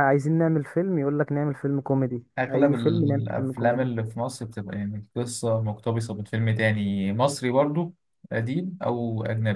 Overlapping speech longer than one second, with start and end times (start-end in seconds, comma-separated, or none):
2.4-3.9